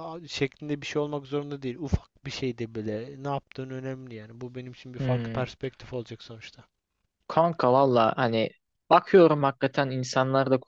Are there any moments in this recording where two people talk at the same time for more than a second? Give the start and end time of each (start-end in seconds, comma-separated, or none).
none